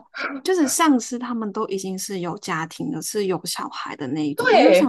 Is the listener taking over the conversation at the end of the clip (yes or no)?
no